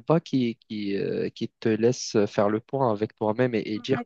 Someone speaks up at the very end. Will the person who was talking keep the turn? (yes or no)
no